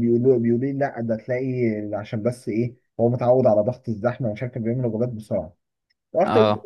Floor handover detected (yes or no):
no